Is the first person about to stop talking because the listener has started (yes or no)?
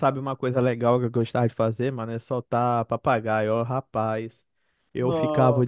no